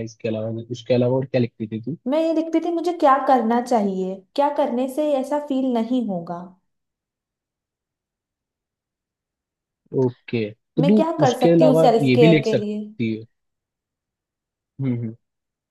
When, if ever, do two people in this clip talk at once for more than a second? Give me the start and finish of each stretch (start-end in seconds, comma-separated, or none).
10.8-12.8